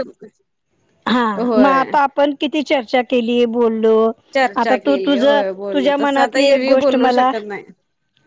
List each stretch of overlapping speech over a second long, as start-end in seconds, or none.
4.7-7.3